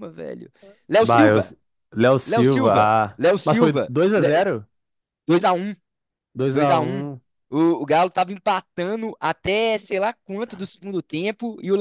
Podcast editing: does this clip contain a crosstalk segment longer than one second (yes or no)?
yes